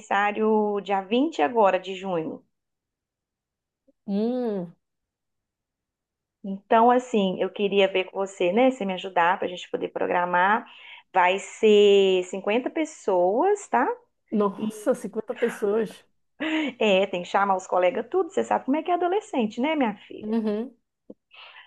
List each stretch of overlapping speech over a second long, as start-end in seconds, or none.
none